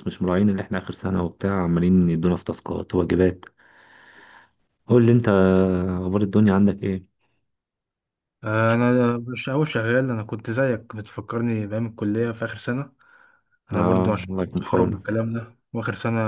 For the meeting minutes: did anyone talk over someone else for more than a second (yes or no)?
yes